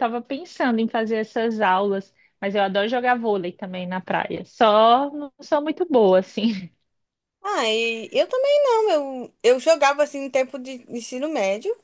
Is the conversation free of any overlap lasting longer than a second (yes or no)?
yes